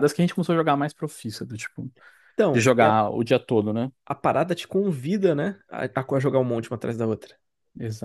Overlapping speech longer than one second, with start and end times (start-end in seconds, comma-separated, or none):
none